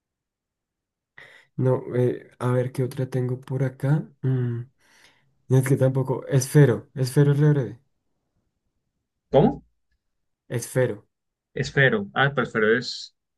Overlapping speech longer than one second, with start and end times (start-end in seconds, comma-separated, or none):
none